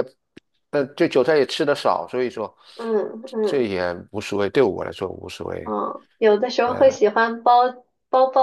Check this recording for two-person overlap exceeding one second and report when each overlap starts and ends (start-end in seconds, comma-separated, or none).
none